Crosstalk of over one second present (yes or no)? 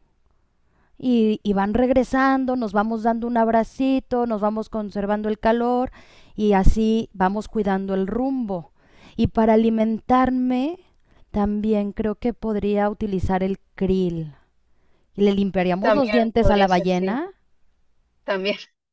yes